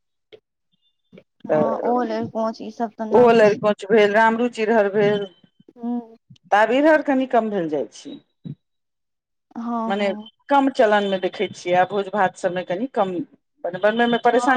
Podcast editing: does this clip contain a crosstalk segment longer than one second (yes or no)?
no